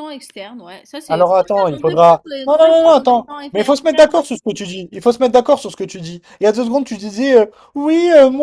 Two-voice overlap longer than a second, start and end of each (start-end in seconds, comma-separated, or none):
1.1-4.1